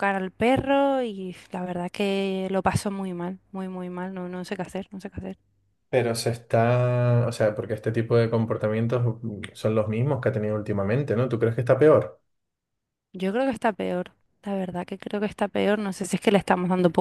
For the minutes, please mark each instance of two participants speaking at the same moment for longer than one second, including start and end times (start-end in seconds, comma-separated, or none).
none